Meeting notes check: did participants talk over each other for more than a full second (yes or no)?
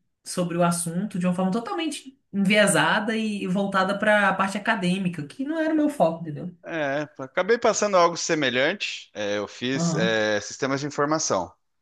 no